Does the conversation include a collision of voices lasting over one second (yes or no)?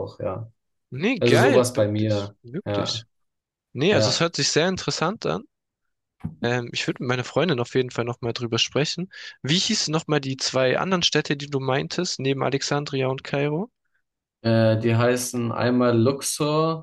yes